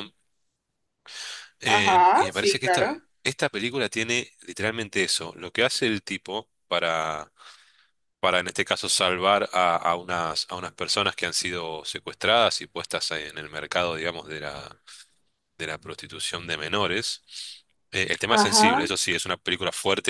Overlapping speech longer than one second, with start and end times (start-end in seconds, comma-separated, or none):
1.6-2.9